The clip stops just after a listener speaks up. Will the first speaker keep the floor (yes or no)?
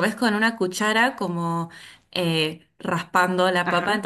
yes